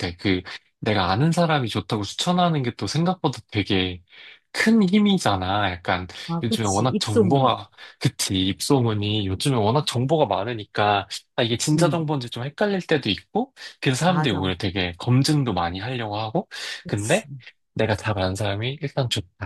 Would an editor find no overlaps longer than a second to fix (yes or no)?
no